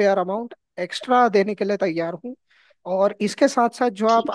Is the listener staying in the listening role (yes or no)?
yes